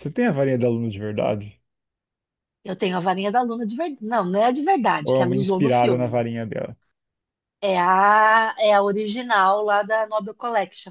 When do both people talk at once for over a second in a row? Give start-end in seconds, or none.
5.0-6.2